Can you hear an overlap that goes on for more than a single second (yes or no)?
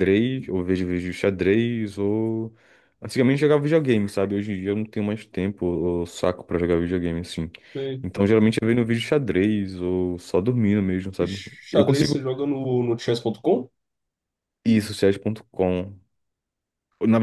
no